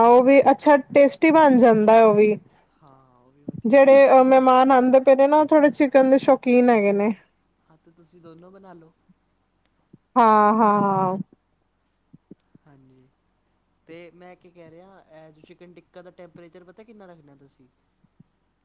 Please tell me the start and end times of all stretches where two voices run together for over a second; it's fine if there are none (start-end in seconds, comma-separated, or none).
none